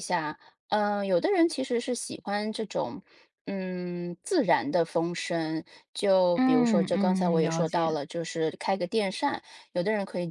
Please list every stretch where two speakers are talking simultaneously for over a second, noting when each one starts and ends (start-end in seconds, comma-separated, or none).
6.3-7.9